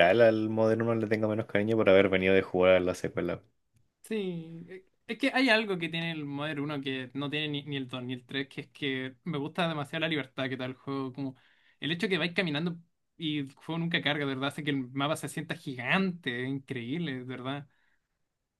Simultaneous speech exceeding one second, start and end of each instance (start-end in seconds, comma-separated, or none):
none